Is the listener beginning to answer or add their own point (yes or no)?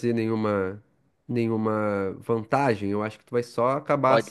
no